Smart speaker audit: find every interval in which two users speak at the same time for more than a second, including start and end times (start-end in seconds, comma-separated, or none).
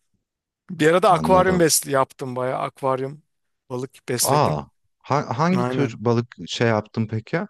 none